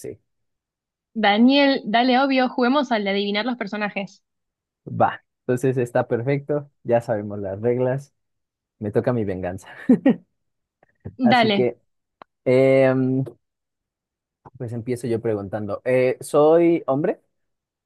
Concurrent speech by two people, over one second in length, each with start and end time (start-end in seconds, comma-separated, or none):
none